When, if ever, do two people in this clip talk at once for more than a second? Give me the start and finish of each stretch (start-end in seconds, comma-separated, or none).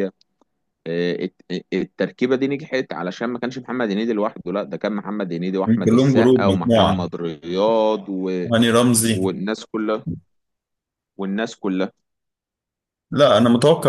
5.7-7.1